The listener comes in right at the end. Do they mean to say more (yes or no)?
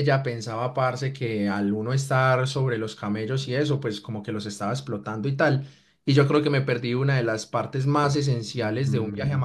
no